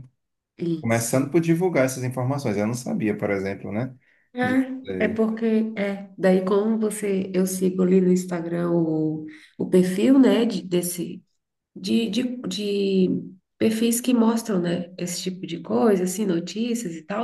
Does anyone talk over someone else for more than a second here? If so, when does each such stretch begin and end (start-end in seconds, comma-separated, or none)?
none